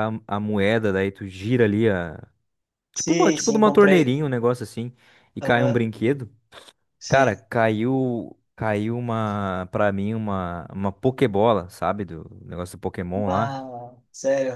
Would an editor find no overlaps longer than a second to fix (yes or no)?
no